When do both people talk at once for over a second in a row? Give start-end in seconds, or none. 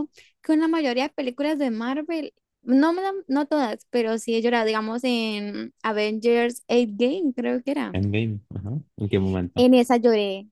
none